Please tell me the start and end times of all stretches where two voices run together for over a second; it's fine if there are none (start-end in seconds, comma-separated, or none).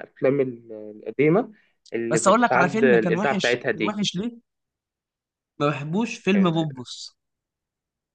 2.1-4.0